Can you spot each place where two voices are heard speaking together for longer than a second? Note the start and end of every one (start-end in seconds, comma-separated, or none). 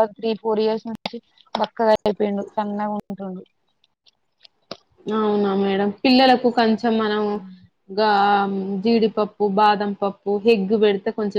none